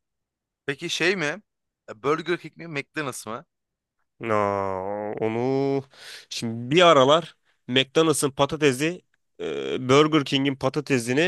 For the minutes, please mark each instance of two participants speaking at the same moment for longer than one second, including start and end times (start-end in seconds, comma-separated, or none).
none